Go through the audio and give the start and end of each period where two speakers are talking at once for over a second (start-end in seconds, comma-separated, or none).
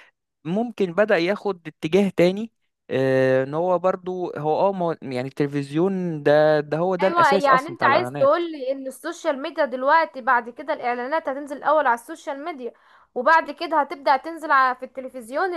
7.0-8.3